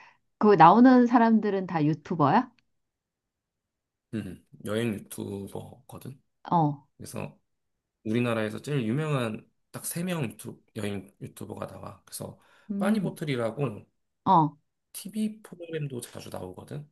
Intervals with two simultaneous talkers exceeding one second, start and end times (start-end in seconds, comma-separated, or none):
none